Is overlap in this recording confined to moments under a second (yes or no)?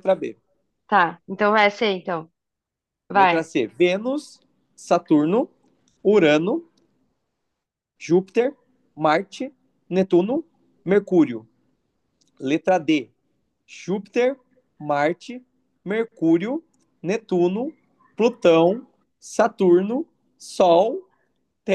yes